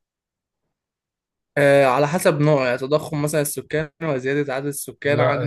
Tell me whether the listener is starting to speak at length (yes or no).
yes